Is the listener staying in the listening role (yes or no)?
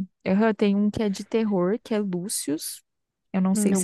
yes